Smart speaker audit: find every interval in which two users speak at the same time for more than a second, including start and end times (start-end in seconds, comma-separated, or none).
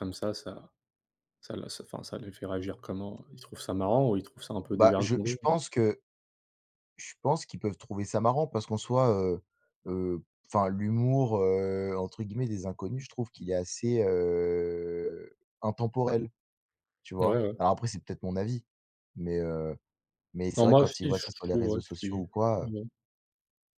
20.6-22.7